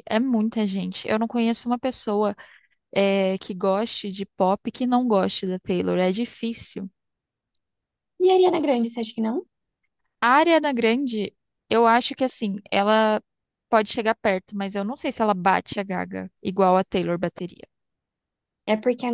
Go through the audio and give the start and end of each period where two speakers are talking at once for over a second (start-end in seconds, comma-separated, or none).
none